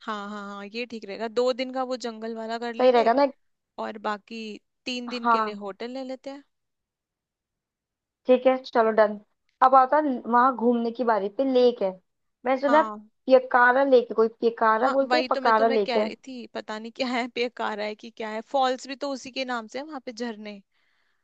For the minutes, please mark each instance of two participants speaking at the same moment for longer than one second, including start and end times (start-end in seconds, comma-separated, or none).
14.8-16.1